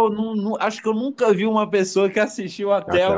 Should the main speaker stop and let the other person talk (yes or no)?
yes